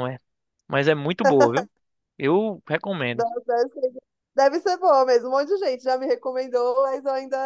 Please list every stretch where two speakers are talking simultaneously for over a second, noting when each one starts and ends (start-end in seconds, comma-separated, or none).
none